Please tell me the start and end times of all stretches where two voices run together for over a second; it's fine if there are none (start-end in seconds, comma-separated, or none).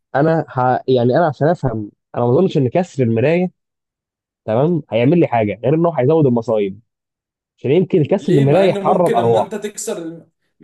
8.2-9.6